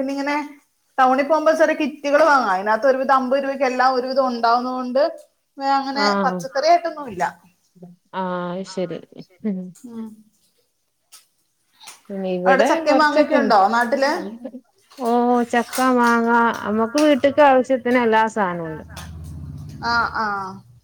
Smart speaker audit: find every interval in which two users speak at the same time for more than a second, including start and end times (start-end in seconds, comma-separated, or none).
12.5-14.1